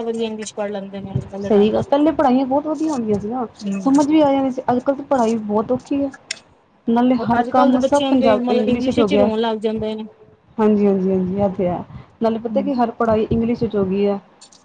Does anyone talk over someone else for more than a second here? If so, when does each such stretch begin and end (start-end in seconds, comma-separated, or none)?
7.4-9.3